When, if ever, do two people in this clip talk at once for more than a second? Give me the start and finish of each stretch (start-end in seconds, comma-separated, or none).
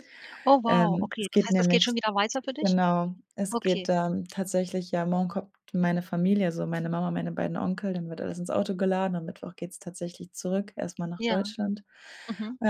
0.7-2.0